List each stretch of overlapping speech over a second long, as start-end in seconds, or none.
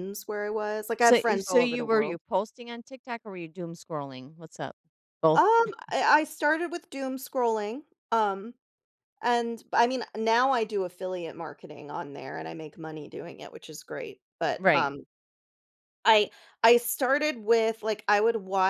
1.0-2.2